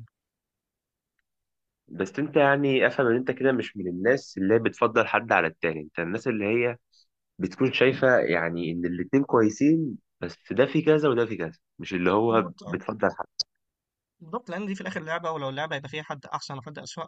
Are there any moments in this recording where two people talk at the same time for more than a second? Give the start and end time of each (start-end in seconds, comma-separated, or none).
none